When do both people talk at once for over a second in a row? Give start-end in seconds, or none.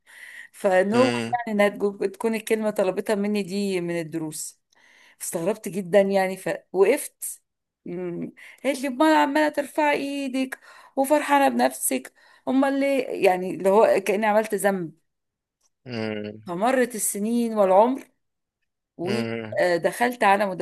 none